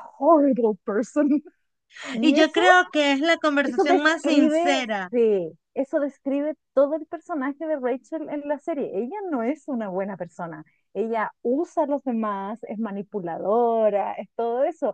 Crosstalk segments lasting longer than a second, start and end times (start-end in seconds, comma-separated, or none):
3.6-5.1